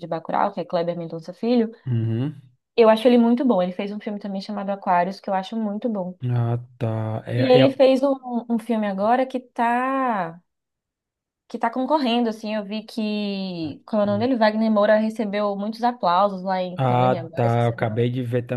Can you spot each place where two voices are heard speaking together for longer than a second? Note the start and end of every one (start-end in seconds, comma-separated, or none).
16.8-18.1